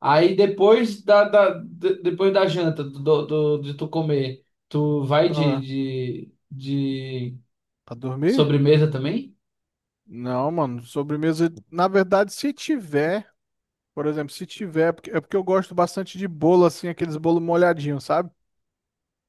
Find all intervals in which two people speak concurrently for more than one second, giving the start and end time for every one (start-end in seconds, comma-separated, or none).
none